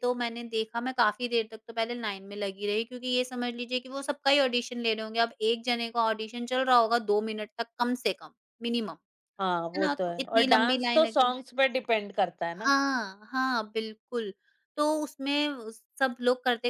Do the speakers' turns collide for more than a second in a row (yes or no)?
yes